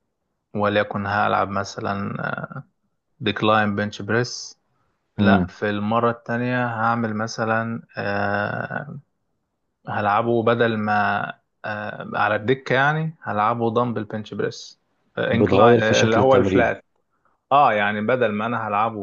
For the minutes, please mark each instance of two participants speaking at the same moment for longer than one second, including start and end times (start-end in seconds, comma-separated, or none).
15.3-16.7